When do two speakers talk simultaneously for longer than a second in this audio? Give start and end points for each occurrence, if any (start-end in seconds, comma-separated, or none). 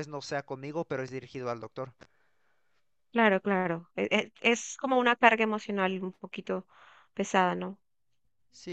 none